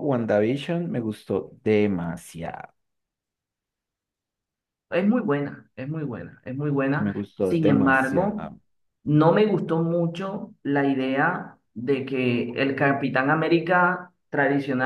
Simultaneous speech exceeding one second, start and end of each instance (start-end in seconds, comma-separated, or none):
7.0-8.5